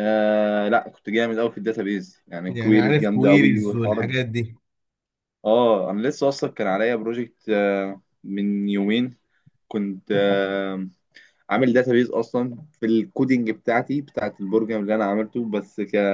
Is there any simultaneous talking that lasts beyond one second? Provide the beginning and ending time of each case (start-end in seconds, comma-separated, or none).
2.5-4.1